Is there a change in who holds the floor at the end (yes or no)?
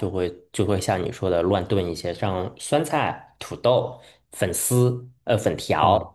no